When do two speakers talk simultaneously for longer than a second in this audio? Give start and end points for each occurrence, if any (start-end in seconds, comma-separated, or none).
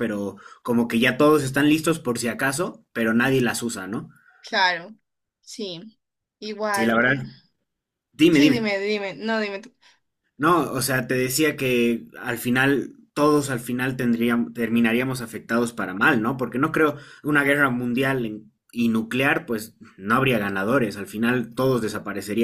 none